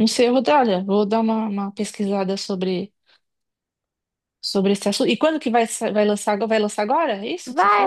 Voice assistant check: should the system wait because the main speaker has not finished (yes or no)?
no